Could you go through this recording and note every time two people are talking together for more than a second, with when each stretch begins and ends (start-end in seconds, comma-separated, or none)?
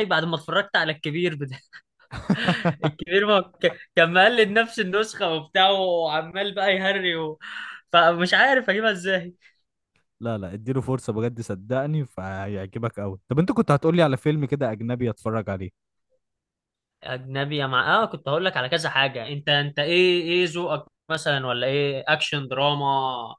none